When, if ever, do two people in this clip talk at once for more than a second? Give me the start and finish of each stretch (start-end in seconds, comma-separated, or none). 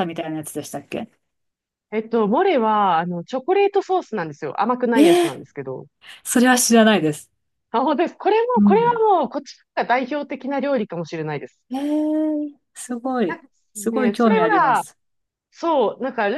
13.3-14.8